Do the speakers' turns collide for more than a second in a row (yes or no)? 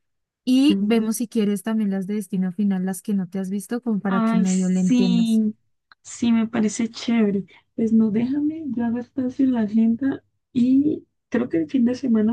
yes